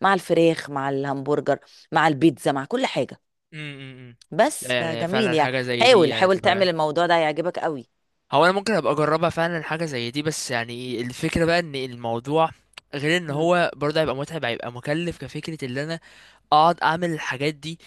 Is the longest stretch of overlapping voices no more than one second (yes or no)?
no